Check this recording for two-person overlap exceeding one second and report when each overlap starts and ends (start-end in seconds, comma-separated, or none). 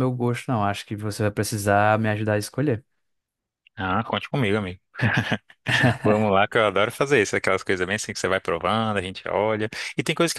none